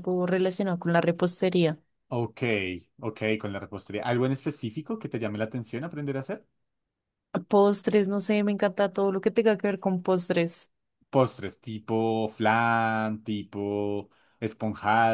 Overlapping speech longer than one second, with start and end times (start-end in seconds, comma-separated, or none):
none